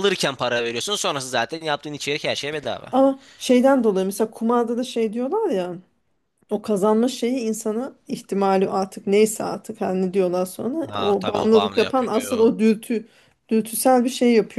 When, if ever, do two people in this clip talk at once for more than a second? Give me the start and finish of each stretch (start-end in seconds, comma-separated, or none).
10.8-12.5